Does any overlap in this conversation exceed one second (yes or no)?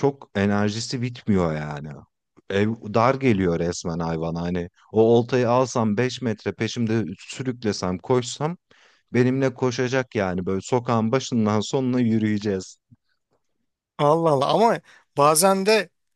no